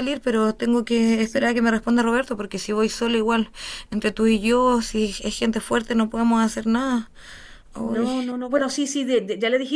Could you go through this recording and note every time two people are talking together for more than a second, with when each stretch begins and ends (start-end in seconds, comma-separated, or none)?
none